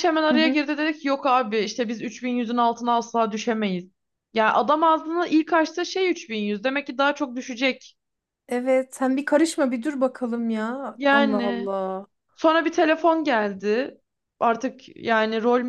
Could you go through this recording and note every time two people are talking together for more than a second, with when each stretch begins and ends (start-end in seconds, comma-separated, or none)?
none